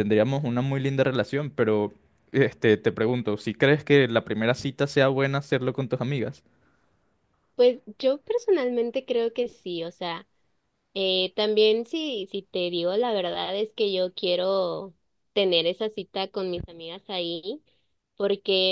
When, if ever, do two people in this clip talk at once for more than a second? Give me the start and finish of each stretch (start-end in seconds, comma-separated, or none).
none